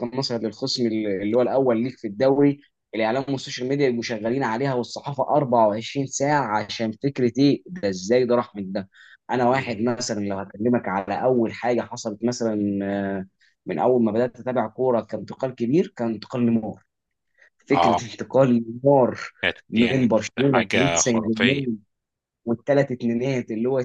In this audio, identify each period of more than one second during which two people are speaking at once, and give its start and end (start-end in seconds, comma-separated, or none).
19.7-21.6